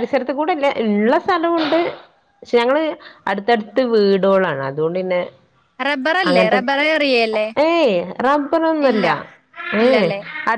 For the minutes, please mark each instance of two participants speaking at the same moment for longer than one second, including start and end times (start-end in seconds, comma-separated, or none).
none